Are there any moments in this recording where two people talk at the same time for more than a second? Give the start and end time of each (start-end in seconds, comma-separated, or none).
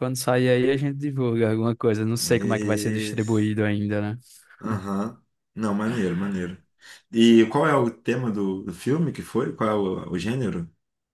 2.2-3.5